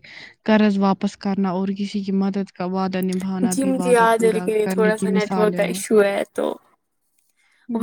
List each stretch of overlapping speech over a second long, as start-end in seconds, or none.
3.5-5.8